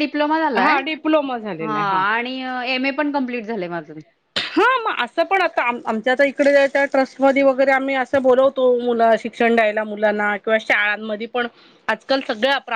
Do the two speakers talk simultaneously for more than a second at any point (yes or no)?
no